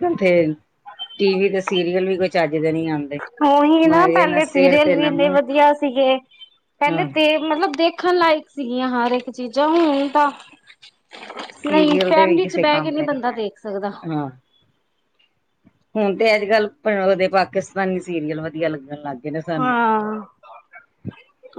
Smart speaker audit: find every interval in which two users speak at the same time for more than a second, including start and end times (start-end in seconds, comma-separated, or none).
11.7-13.4